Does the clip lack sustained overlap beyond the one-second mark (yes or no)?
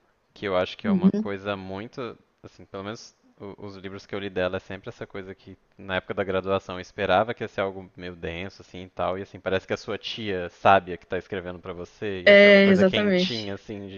no